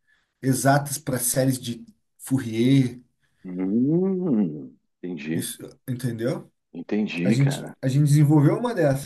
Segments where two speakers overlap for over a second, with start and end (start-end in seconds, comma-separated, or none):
none